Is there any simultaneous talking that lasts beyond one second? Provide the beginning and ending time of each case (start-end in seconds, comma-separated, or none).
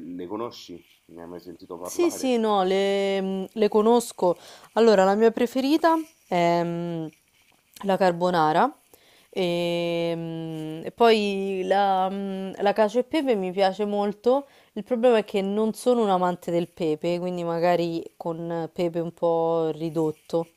none